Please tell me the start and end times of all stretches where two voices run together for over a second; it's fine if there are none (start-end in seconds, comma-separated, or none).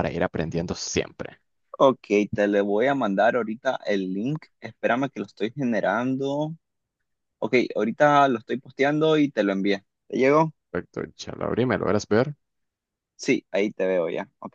none